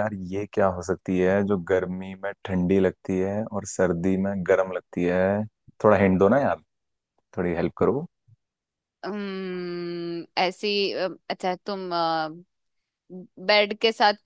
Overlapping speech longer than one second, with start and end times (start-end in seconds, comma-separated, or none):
none